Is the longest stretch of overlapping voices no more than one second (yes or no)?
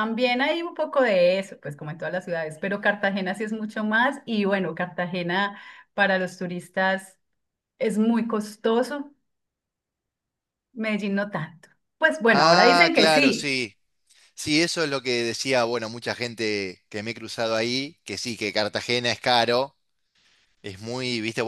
no